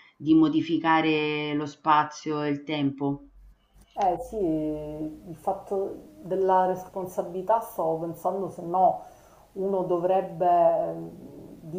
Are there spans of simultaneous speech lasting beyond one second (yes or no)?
no